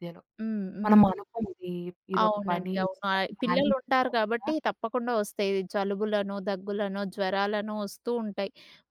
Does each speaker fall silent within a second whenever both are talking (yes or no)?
no